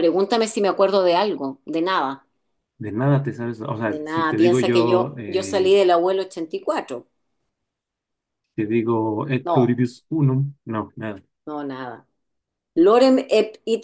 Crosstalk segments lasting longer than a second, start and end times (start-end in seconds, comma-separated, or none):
3.8-5.8